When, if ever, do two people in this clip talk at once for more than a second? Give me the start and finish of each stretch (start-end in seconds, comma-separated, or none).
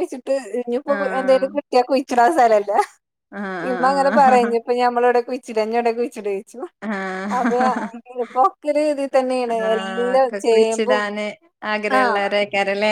9.7-11.0